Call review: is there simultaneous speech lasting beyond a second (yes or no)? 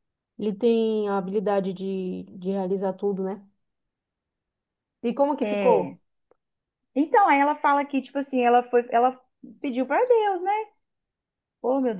no